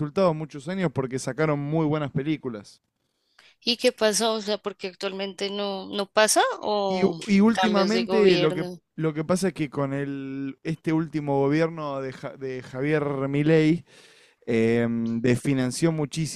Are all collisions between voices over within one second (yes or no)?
no